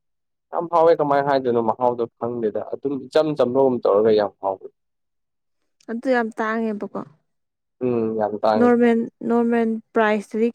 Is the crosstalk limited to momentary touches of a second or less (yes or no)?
yes